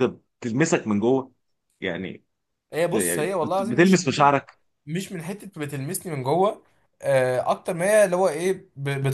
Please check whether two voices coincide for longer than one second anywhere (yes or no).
yes